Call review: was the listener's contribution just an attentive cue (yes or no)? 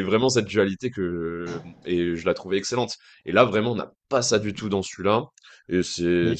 yes